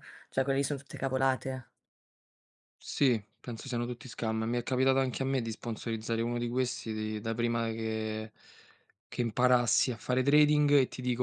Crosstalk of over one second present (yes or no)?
no